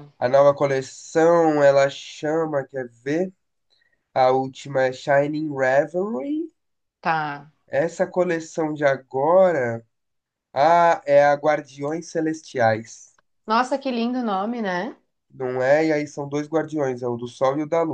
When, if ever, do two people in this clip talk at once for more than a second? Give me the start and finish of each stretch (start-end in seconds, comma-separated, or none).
none